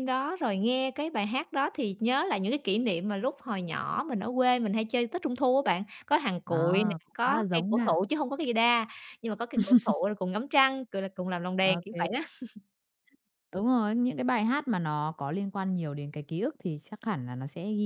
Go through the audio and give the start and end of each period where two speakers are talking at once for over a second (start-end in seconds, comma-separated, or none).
6.5-8.0